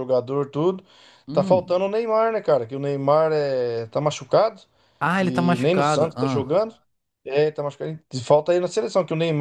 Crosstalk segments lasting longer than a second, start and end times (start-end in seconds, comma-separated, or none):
5.2-6.5